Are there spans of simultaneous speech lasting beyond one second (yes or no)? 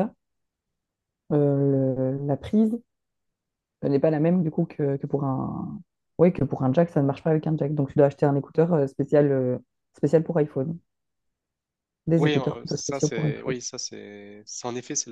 yes